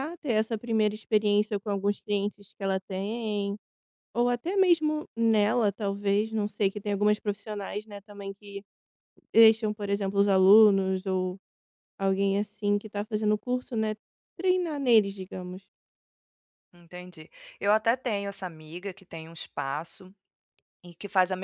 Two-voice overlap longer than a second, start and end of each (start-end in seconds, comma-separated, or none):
none